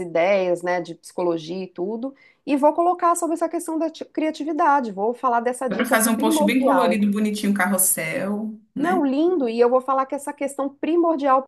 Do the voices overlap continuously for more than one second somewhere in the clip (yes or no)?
yes